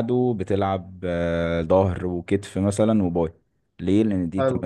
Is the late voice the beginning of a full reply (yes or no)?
no